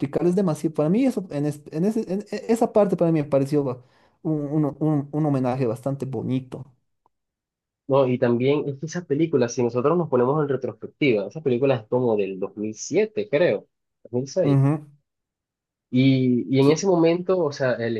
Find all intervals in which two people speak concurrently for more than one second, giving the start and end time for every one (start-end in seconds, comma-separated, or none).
none